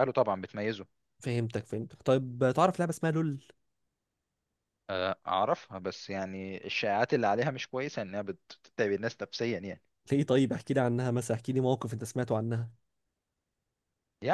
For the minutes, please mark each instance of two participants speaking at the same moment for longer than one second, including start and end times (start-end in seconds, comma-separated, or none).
none